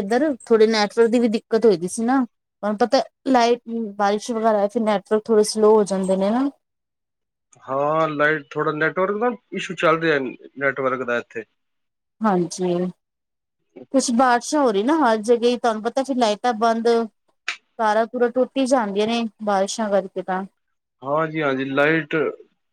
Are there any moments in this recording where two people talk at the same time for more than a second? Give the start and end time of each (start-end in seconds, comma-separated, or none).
none